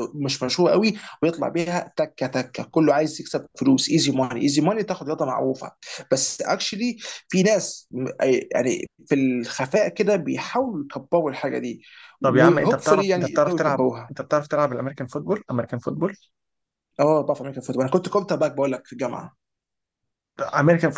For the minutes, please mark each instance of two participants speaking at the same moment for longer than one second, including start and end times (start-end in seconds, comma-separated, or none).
12.2-14.1